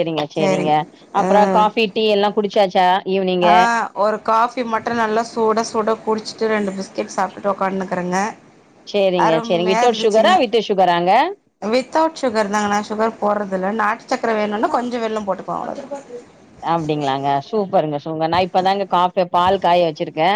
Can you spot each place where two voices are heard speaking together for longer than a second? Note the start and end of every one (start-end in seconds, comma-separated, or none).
none